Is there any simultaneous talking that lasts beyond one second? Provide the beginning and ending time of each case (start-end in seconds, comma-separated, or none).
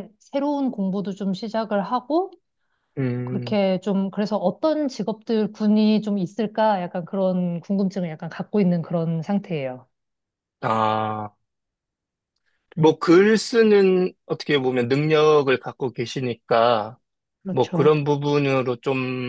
none